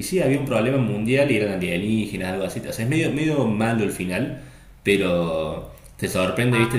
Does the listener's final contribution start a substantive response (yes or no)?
no